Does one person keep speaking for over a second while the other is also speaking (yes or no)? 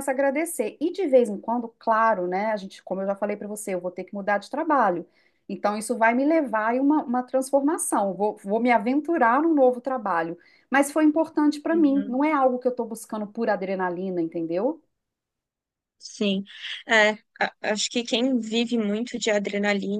no